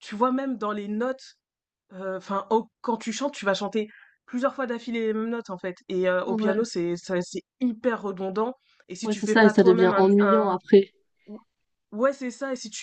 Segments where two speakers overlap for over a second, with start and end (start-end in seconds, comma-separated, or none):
9.1-10.6